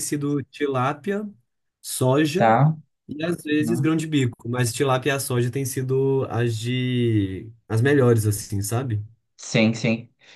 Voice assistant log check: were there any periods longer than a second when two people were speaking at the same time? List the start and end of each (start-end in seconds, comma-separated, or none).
none